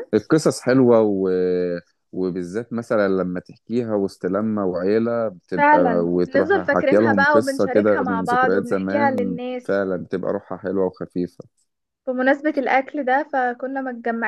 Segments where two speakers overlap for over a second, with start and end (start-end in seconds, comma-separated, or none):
5.6-9.8